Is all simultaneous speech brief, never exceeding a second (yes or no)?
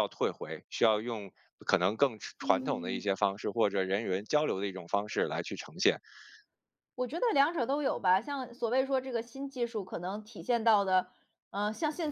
yes